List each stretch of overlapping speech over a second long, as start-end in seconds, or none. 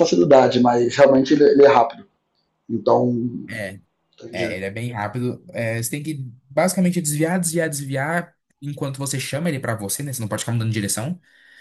none